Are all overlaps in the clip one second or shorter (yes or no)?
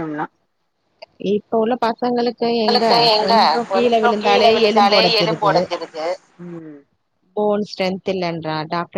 no